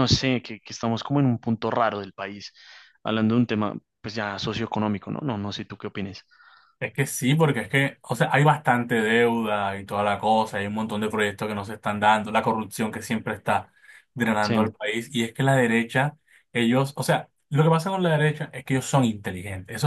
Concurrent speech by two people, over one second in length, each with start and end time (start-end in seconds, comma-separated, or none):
none